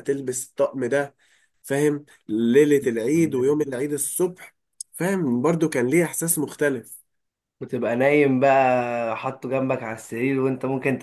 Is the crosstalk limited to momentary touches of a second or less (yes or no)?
yes